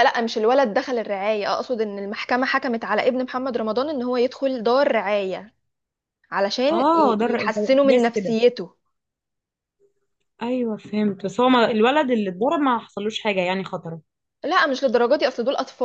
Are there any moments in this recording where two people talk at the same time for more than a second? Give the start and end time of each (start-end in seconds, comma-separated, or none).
6.7-8.4